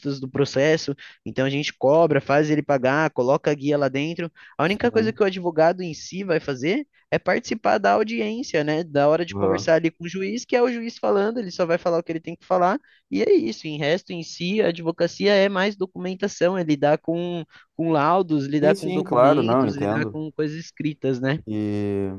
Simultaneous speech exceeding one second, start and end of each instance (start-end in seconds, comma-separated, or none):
18.6-20.2